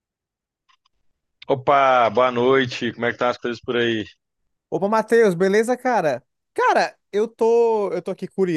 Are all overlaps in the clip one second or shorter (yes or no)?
yes